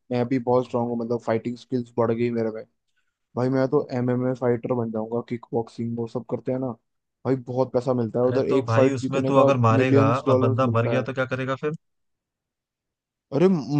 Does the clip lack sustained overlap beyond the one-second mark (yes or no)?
no